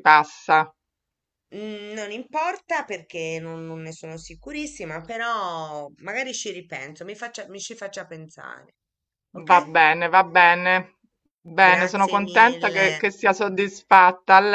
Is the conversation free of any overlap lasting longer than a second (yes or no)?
no